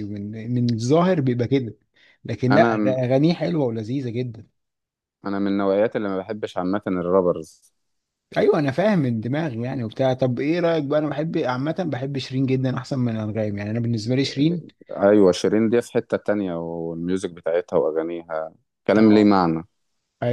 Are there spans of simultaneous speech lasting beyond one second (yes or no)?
no